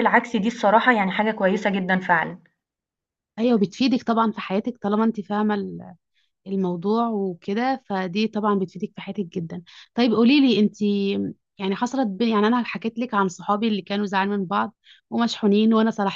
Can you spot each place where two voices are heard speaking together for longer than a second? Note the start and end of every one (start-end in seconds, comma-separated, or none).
none